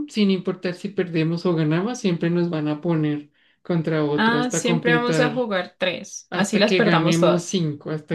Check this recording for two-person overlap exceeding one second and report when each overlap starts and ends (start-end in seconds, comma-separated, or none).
4.1-5.5, 6.3-7.5